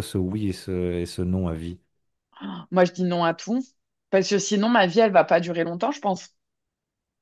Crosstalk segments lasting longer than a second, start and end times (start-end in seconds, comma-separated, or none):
none